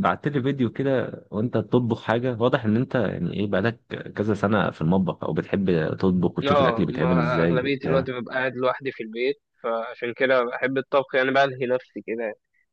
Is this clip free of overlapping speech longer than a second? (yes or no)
no